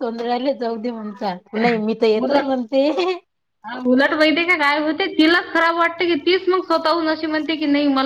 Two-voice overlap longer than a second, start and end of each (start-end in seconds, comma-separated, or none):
none